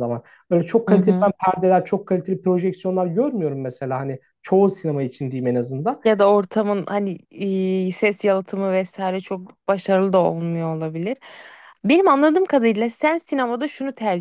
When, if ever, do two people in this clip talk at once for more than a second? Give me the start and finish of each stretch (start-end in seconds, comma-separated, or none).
none